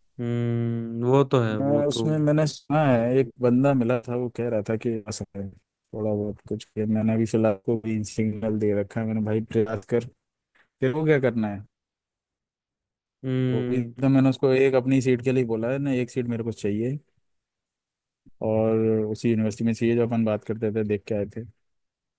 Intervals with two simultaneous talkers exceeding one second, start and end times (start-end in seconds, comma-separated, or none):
none